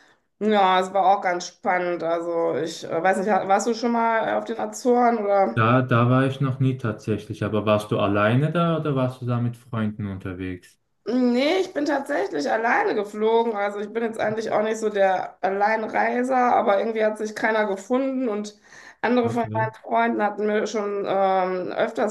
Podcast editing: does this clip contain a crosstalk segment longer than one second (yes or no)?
no